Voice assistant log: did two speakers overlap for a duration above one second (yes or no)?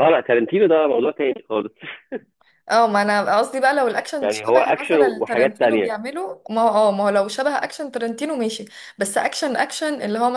yes